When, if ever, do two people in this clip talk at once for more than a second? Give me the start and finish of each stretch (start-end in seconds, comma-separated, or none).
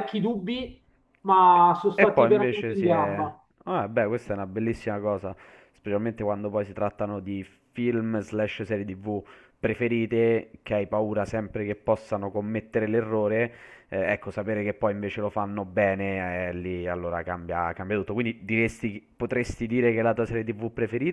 2.0-3.2